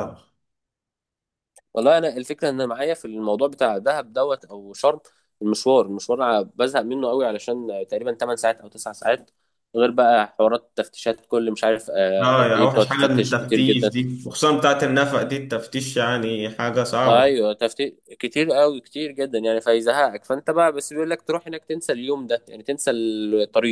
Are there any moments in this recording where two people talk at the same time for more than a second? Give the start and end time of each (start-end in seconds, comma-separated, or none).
12.2-13.9